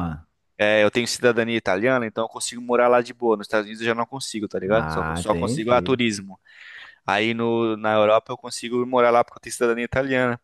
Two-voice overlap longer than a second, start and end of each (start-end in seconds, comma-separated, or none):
4.7-6.0